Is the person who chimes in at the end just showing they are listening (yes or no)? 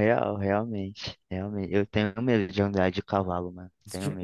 no